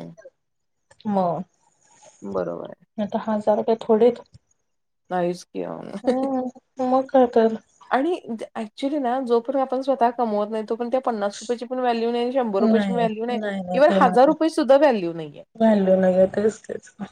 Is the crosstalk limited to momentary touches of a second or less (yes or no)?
no